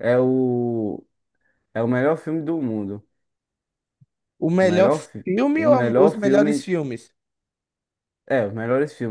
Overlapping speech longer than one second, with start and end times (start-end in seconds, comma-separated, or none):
4.6-6.7